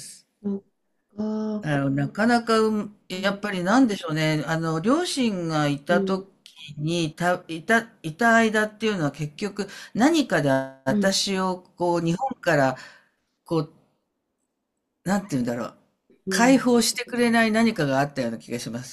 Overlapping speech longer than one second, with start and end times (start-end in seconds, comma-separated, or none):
none